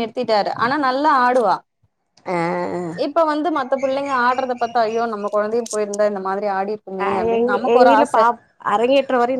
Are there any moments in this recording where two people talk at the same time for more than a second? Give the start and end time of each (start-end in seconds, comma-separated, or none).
none